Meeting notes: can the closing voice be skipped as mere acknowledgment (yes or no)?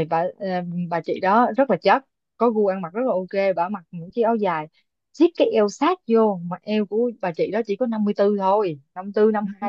no